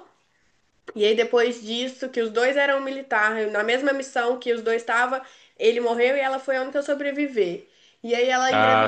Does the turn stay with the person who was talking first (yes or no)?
yes